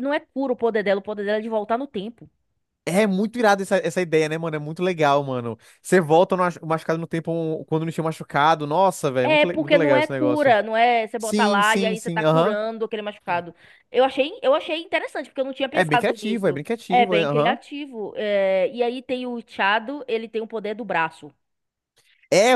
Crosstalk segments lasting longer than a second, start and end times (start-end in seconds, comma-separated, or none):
9.3-10.6, 11.2-12.6, 15.7-17.6